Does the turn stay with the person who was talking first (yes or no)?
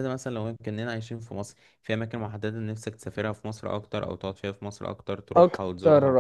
no